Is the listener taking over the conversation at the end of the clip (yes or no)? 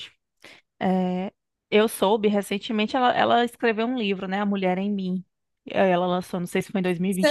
yes